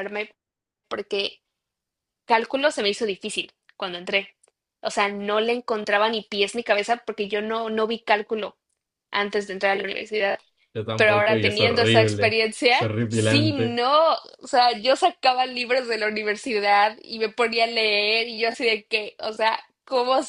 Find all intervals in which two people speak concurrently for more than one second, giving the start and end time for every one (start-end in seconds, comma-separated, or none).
11.0-13.8